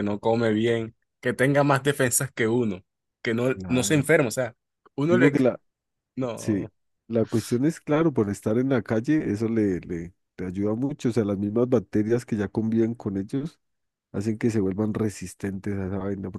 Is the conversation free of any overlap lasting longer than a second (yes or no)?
yes